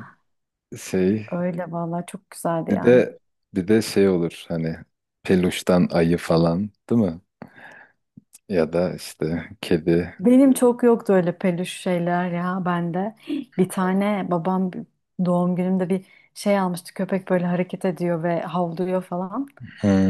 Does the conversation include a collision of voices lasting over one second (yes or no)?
no